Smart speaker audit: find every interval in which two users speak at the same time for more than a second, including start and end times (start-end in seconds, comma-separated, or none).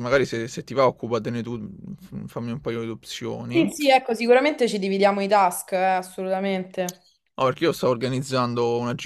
none